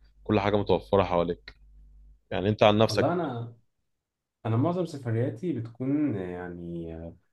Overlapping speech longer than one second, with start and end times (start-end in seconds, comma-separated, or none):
none